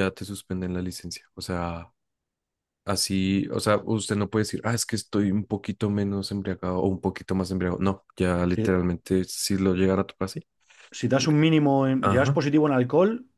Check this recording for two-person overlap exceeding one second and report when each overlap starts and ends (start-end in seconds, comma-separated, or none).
none